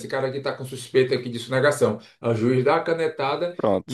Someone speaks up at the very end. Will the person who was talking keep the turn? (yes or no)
yes